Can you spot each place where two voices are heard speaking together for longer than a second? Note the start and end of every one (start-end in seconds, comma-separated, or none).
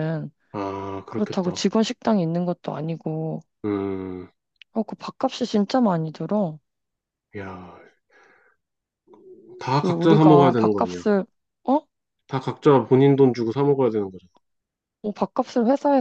9.8-11.0